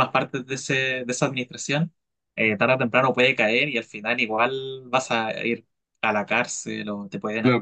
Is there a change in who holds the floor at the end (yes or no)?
yes